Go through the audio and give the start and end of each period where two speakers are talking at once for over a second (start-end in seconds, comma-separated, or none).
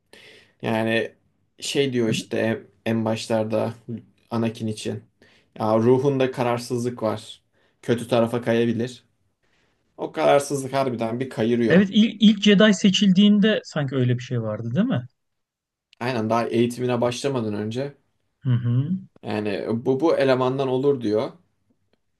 none